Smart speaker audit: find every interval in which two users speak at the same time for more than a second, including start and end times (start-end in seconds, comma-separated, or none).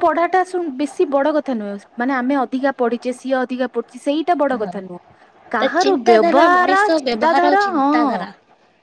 5.6-7.9